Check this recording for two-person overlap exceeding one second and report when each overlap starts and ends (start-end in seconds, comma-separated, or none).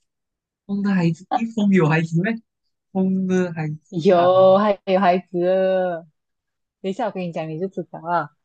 none